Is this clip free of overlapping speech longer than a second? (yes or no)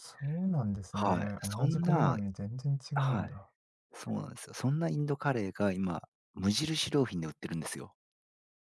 no